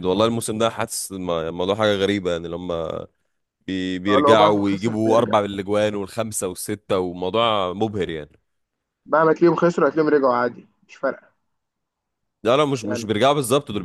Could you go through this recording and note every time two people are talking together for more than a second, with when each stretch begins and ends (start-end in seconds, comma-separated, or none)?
4.1-5.3